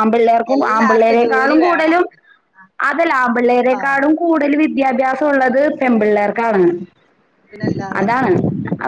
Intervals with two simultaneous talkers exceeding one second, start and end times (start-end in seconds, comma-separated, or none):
0.6-2.0